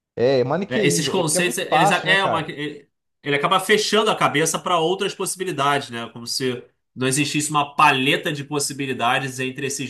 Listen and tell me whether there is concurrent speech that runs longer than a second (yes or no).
yes